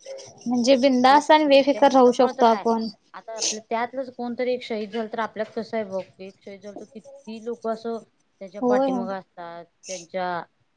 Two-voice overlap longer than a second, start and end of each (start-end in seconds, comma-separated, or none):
1.1-2.6